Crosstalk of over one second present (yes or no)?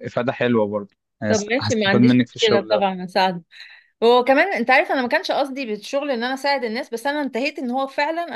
yes